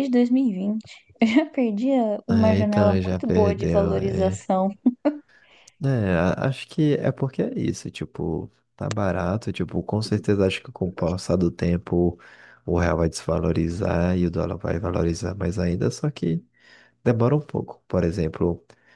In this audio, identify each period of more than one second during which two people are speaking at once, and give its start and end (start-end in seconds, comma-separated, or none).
2.3-4.5